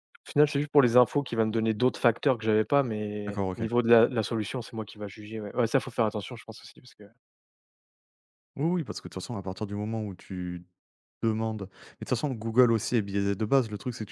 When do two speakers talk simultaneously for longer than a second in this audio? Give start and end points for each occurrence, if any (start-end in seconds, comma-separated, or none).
none